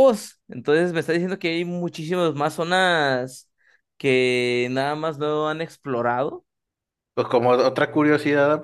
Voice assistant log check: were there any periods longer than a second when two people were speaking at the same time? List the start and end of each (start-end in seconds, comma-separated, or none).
none